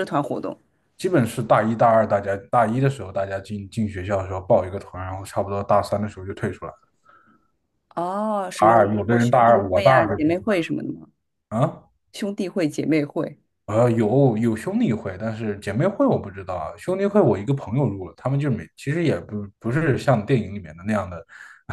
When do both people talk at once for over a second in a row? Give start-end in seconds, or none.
8.6-10.2